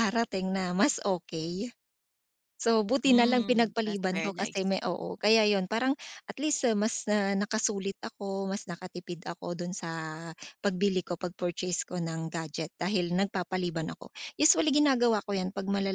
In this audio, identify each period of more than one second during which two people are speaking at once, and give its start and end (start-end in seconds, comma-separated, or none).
3.0-4.8